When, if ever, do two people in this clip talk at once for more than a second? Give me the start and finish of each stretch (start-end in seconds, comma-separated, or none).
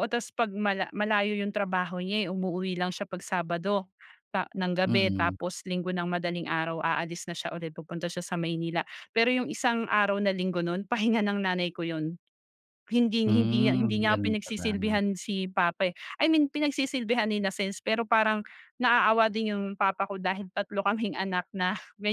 13.2-15.0